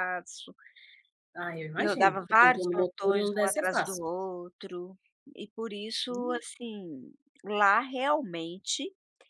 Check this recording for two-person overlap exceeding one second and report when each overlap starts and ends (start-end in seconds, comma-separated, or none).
1.8-4.0